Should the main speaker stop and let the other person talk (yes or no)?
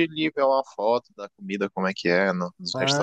yes